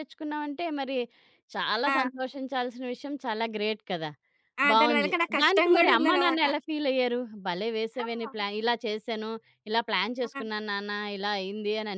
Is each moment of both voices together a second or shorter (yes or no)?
no